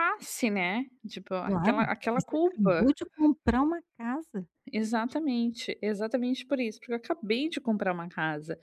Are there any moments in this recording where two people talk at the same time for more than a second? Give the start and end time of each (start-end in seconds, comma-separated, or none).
1.4-2.8